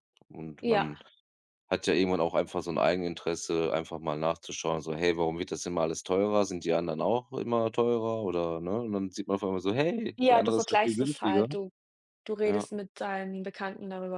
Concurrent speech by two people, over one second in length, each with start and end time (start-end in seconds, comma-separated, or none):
10.2-11.5